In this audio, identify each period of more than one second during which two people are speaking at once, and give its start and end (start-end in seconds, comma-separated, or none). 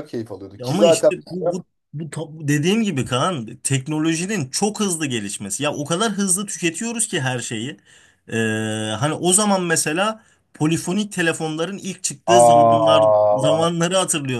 12.3-13.6